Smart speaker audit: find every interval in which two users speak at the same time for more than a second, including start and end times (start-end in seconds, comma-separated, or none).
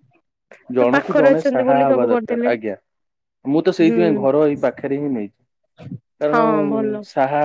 0.9-2.5